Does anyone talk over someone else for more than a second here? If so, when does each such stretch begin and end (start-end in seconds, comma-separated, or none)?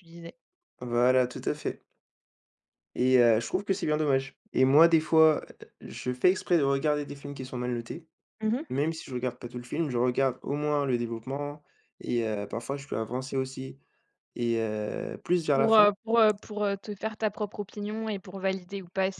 none